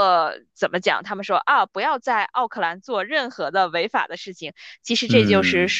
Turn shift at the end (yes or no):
no